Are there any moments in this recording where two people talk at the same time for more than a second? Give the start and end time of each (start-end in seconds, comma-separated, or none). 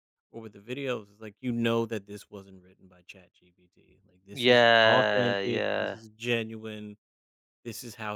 4.3-6.0